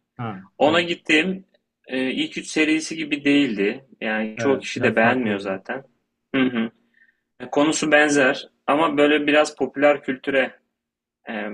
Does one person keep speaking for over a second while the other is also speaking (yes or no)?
yes